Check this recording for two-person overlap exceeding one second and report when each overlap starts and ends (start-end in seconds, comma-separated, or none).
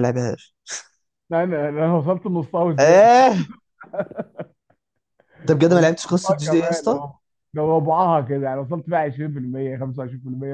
5.7-7.0